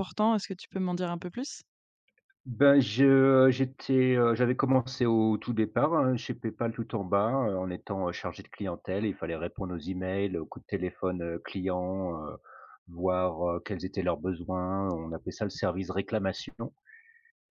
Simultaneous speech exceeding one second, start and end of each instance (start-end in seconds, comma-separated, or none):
none